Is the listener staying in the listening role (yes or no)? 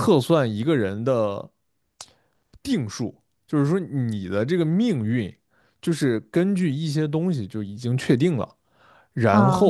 yes